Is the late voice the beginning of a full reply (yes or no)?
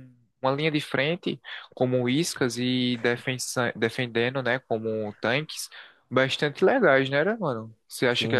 yes